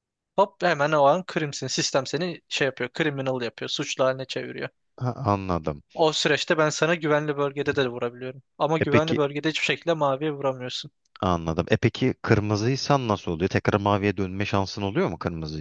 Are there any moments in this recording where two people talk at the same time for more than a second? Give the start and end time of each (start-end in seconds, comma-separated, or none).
none